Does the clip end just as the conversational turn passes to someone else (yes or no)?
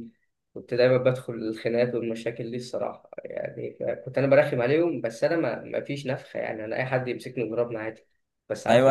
yes